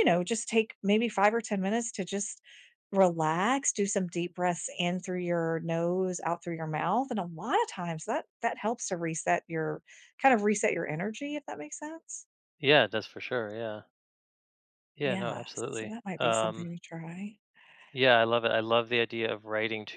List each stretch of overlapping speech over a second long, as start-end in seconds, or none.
15.0-16.7